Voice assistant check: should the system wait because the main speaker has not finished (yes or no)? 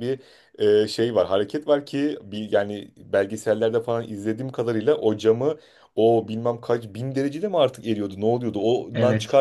yes